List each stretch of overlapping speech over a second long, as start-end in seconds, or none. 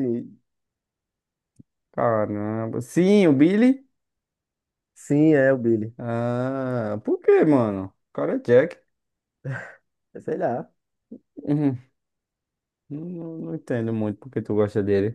none